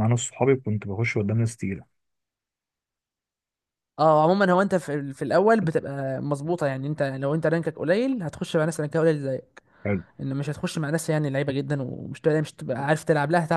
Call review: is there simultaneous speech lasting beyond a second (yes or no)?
no